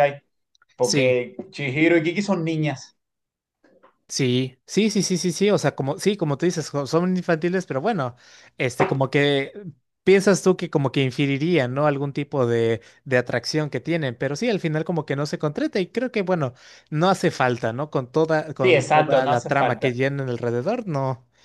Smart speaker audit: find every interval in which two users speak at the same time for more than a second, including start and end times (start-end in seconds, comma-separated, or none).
18.6-19.9